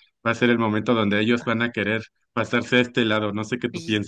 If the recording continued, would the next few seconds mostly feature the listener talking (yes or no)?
yes